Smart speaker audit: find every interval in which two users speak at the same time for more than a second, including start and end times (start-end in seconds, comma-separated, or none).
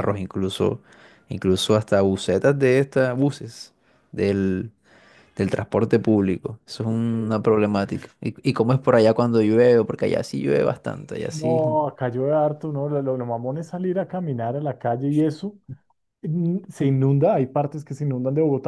none